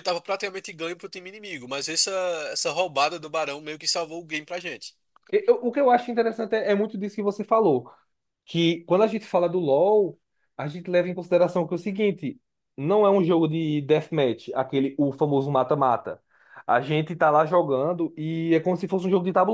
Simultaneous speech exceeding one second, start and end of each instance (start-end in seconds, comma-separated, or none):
none